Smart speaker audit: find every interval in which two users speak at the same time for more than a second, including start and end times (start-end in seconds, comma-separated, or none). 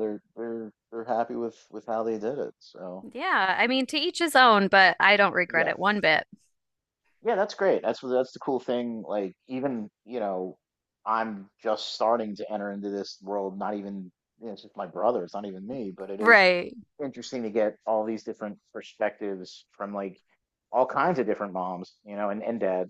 none